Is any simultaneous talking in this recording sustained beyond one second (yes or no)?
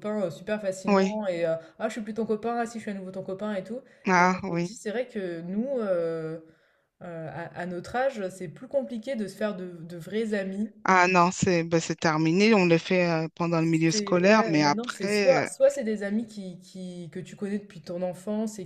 yes